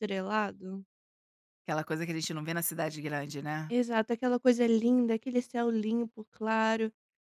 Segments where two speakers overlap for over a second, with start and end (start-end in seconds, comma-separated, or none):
none